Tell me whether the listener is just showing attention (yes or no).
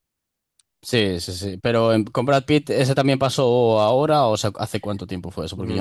no